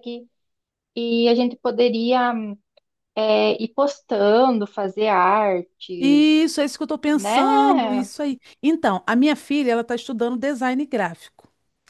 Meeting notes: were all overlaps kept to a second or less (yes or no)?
yes